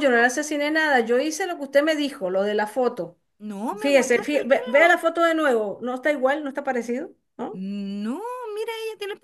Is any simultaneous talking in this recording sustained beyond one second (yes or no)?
yes